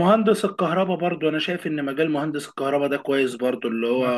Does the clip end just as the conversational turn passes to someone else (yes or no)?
no